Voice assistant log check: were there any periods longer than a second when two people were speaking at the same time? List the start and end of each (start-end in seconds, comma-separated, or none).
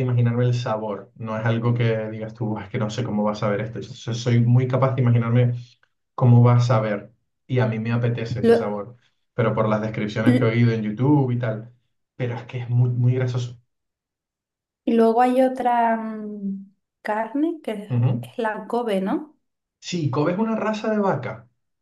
none